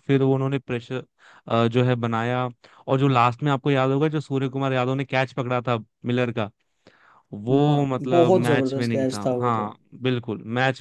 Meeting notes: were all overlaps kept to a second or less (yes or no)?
no